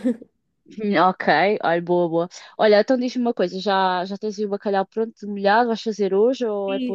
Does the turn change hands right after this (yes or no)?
yes